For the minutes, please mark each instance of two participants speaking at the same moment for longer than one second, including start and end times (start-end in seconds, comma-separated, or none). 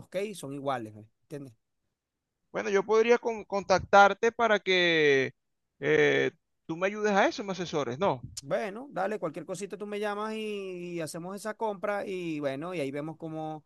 none